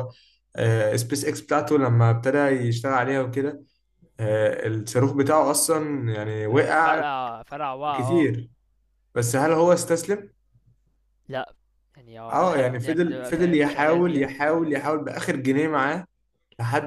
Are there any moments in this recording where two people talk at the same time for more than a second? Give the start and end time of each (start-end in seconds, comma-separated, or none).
12.3-14.2